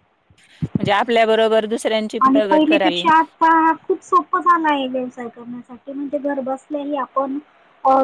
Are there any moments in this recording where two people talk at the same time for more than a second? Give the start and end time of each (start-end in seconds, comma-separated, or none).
none